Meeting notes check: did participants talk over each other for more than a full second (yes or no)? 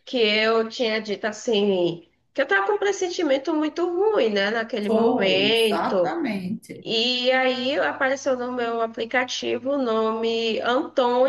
yes